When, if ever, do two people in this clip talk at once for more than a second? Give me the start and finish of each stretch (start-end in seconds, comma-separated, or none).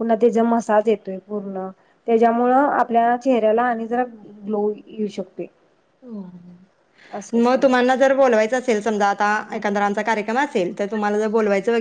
none